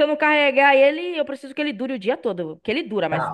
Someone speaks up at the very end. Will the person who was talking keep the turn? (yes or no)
no